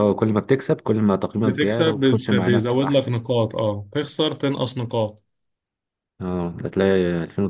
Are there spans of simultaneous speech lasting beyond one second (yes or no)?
yes